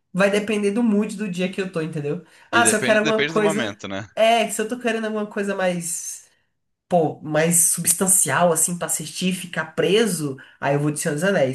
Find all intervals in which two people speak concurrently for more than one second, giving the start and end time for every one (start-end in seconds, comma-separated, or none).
2.6-3.8